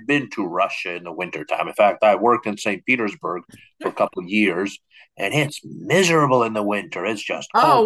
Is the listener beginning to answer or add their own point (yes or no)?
yes